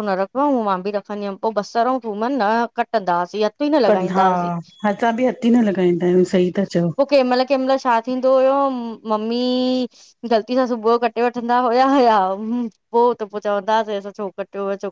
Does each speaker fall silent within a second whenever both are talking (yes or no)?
yes